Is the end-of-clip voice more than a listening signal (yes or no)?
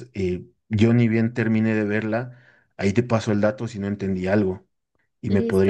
yes